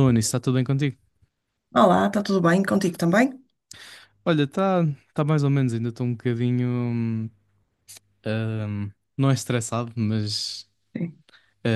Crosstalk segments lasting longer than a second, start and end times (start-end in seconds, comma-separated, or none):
none